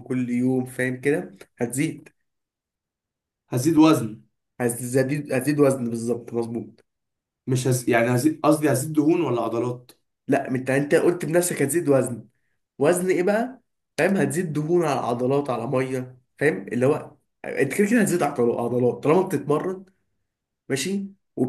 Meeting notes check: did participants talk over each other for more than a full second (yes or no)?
no